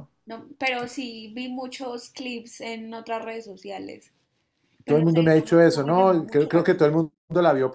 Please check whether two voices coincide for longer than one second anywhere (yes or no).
yes